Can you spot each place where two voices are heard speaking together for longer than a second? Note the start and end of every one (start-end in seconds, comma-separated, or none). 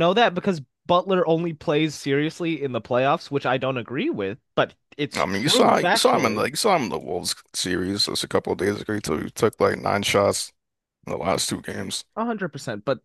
5.2-6.4